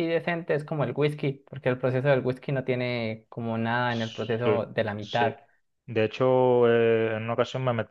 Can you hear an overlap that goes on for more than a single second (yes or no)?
yes